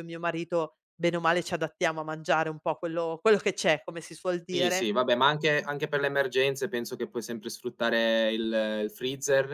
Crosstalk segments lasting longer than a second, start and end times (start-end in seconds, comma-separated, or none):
none